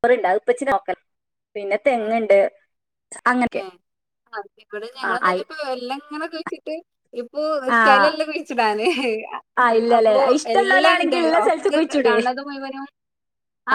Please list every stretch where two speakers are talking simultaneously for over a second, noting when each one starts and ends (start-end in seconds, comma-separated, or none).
9.9-12.1